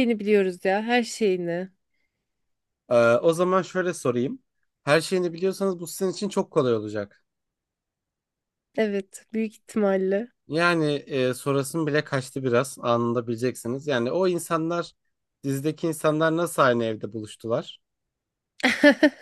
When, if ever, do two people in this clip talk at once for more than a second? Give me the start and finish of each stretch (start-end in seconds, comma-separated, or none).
none